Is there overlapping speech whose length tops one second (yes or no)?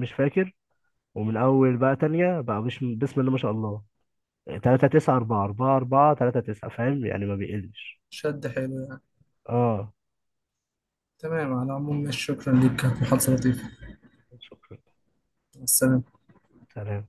no